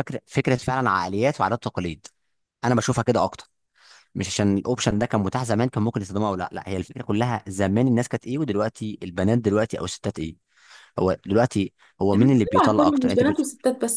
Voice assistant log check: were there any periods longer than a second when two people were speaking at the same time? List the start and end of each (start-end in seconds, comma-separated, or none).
12.1-13.4